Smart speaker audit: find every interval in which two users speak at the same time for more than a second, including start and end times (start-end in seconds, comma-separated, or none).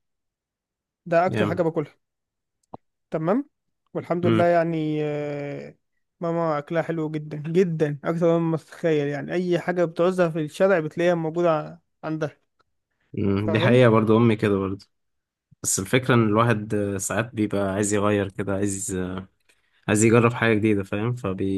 none